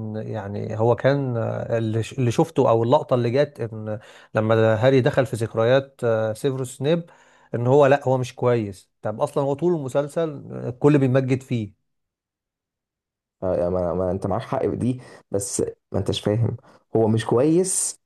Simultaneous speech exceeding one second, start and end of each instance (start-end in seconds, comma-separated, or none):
none